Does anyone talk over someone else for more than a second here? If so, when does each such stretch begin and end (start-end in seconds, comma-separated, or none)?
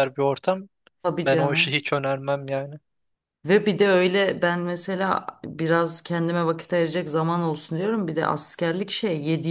none